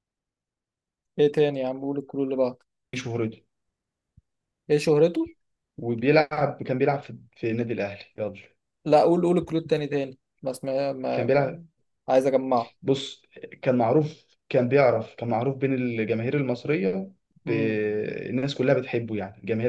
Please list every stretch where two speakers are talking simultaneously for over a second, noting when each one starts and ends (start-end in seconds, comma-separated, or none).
none